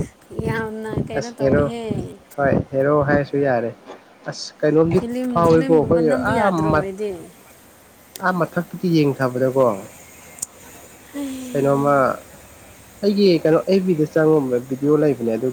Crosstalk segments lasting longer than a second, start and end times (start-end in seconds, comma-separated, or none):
5.0-6.9